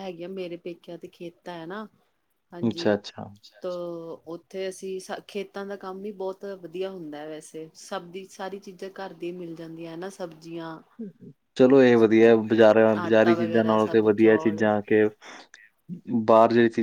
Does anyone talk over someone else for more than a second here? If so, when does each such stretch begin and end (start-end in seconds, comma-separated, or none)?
13.0-14.6